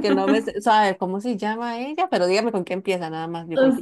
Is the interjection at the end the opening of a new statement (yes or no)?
yes